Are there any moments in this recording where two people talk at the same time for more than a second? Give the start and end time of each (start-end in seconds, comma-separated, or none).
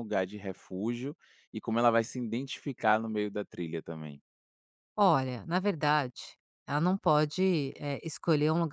none